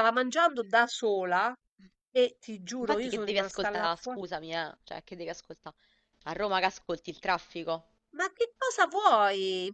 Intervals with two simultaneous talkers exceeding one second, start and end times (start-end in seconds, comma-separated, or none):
2.8-4.2